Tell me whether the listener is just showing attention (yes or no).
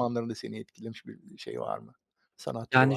no